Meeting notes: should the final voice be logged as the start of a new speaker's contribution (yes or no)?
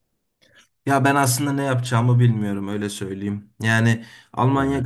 no